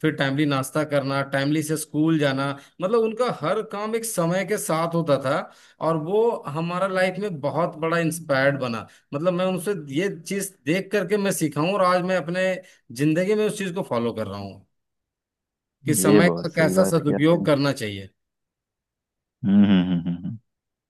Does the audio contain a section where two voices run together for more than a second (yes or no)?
yes